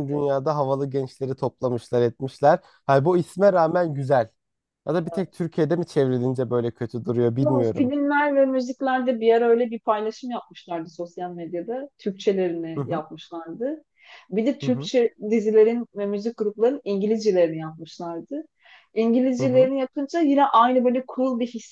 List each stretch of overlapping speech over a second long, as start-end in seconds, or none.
none